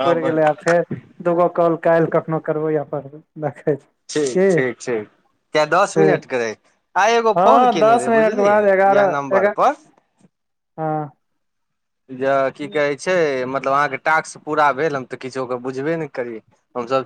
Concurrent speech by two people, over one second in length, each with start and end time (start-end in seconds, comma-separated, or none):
7.4-9.6